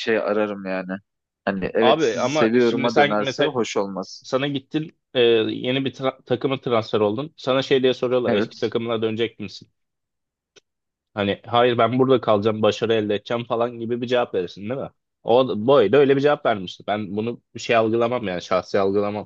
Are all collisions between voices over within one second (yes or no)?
no